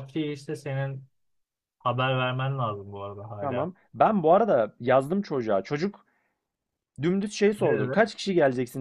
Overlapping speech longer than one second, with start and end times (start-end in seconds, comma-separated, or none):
none